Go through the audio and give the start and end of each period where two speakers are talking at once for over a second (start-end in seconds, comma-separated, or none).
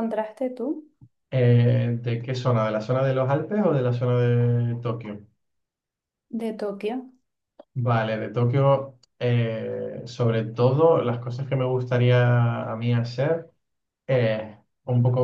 none